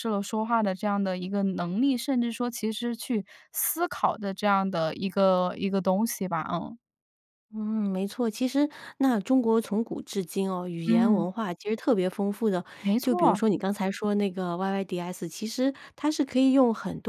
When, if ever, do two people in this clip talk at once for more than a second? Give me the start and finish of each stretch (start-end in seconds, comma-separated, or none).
none